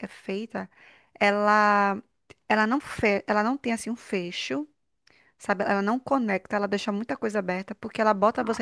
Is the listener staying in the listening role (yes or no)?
yes